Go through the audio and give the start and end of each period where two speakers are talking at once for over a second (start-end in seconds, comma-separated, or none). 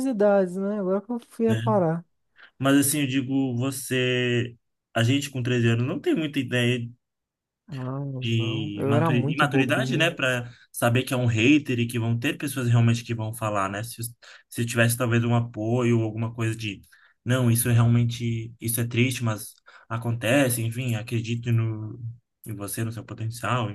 8.2-10.2